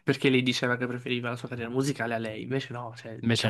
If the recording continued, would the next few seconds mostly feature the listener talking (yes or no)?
no